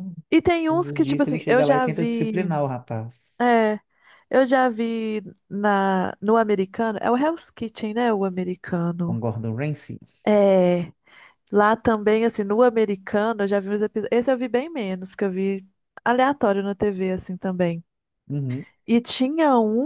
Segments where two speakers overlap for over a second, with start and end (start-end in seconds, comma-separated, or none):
0.7-2.5